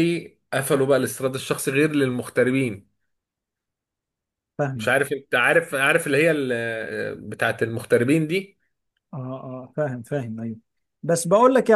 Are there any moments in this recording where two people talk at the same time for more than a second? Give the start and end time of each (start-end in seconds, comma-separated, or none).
none